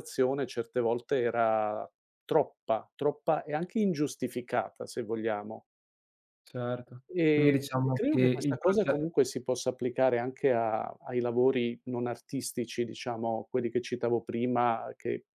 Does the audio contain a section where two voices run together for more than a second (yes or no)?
yes